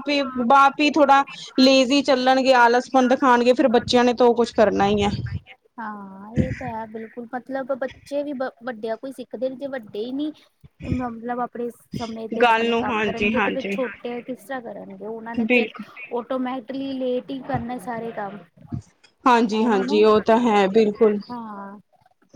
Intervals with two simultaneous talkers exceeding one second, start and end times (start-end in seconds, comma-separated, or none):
12.4-13.8